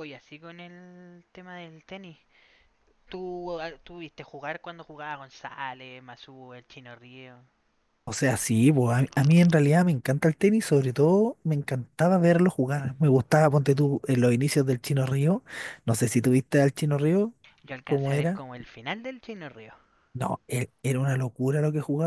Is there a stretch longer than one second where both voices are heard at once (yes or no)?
no